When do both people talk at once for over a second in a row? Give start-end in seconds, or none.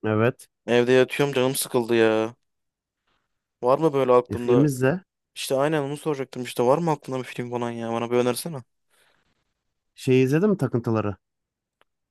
none